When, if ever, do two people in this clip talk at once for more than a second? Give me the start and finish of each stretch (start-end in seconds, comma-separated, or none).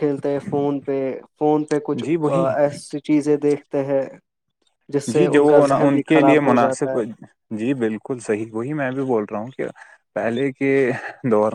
5.1-7.0